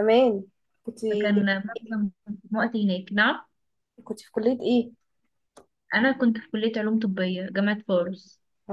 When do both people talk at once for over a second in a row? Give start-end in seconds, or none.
none